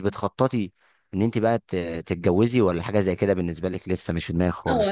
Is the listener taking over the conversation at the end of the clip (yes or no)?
yes